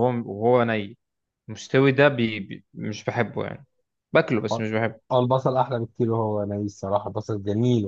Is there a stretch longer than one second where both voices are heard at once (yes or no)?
no